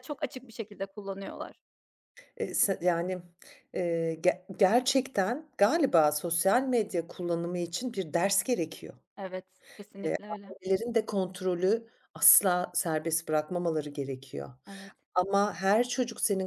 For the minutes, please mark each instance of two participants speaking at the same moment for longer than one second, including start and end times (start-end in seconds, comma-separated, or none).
none